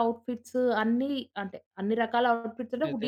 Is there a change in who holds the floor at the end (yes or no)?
no